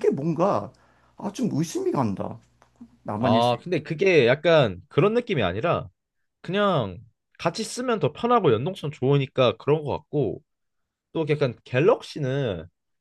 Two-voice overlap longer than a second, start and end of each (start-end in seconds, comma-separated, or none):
none